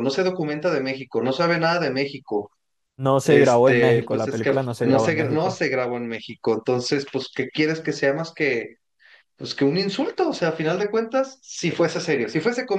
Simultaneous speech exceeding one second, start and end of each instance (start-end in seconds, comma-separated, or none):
3.2-5.6